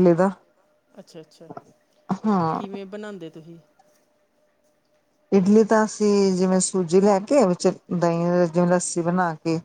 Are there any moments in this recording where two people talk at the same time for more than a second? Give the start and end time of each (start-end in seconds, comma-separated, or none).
none